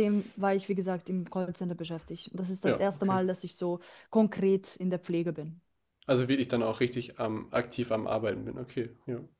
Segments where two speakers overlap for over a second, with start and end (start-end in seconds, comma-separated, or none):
none